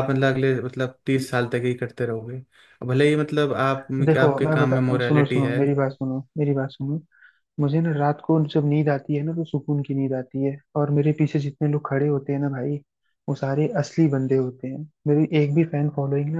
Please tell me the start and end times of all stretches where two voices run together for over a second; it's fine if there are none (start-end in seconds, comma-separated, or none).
4.0-5.6